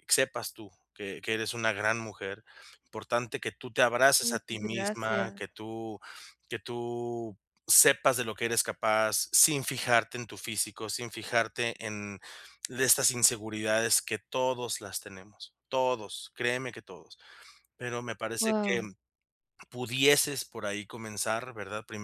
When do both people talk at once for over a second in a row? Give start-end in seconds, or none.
4.2-5.4